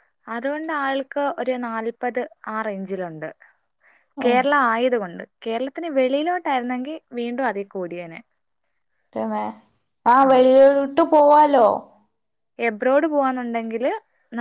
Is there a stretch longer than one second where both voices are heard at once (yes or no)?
no